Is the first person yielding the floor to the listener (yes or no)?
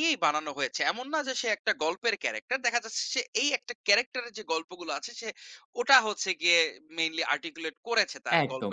yes